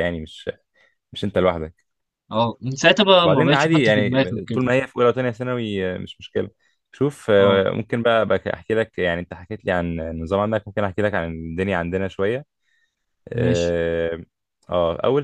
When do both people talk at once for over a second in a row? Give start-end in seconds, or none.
3.2-4.7